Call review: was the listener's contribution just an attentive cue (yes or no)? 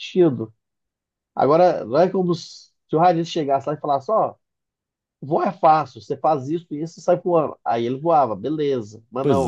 yes